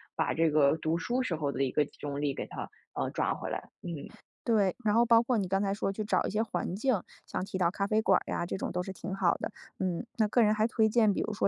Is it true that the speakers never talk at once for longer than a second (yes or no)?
yes